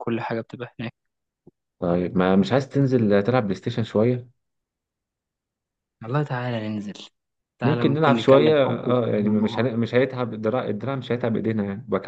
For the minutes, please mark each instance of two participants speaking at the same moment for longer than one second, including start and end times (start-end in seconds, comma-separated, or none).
7.6-9.7